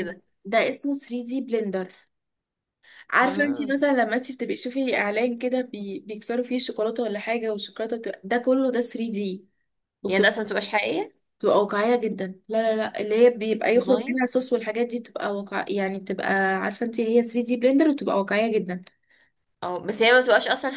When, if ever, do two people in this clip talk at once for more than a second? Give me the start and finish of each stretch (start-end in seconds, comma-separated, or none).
none